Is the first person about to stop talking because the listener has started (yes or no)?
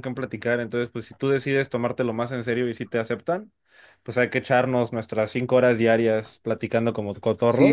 yes